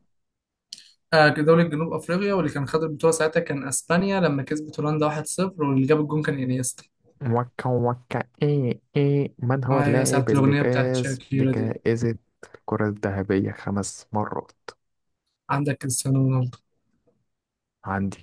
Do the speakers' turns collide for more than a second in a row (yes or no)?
yes